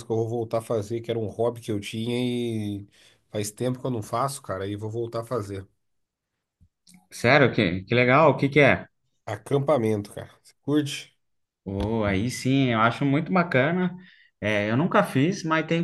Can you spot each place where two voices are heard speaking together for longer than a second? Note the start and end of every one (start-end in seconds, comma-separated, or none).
none